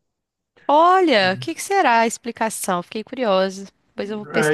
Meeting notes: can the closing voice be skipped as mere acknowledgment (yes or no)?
no